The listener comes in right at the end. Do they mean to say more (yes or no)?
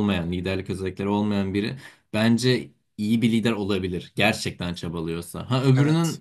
no